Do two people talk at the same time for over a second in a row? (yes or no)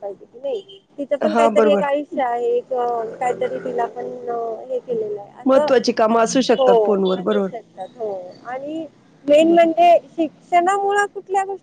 no